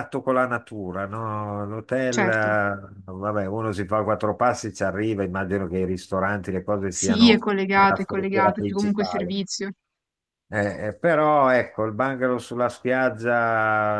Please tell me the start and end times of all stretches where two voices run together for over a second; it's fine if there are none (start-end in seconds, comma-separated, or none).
6.9-9.3